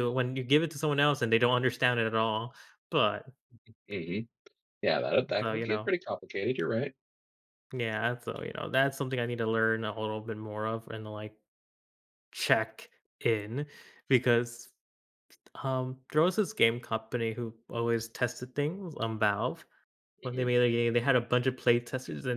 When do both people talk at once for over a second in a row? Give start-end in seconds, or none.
none